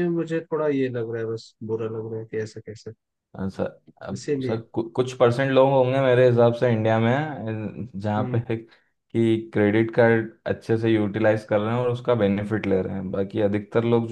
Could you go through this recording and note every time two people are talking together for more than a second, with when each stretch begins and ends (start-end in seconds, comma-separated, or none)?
none